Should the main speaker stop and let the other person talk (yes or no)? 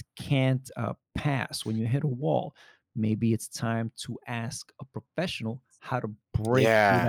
yes